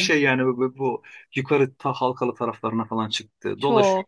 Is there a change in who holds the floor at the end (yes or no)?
no